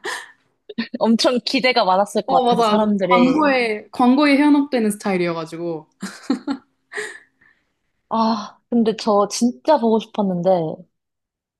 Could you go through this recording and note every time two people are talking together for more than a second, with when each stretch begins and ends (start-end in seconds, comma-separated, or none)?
2.3-3.6